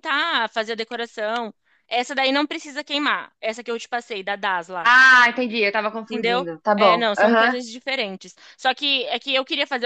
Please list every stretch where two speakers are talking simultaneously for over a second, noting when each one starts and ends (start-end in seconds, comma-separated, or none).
6.0-7.6